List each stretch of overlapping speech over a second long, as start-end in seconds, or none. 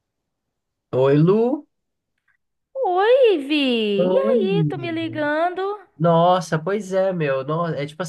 none